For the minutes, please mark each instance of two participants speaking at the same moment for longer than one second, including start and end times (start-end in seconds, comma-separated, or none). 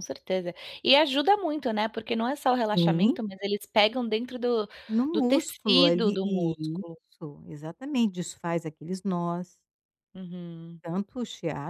5.1-7.0